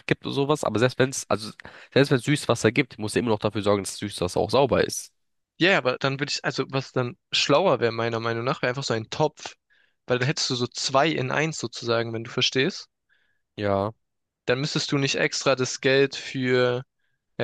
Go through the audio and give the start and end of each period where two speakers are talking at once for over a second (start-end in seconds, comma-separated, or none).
none